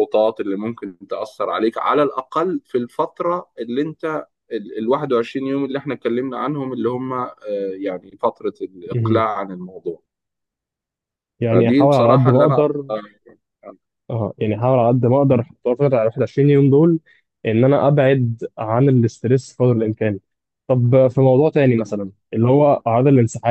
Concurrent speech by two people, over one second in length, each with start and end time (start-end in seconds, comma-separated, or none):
11.5-13.0